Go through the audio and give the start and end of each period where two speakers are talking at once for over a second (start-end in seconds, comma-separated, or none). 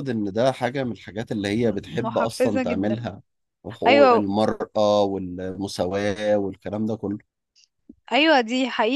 1.6-3.0